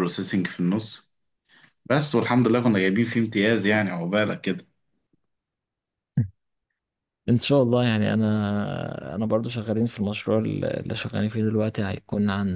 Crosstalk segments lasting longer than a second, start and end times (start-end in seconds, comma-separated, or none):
none